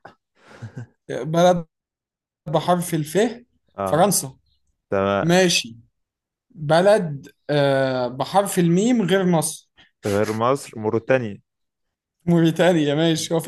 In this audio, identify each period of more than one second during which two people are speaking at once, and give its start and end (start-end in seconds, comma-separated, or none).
none